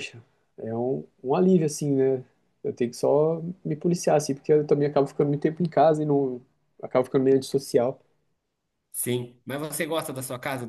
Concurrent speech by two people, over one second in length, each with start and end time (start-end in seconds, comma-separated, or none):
none